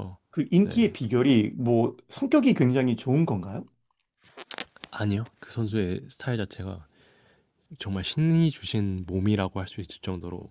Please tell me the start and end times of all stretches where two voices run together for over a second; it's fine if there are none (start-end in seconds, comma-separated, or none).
none